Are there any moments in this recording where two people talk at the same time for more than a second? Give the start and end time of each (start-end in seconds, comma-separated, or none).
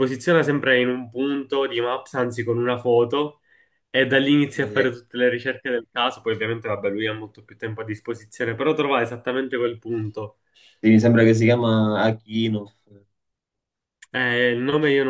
none